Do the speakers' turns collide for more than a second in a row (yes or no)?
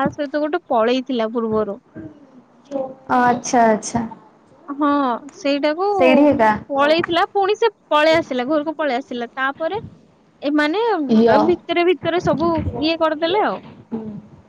no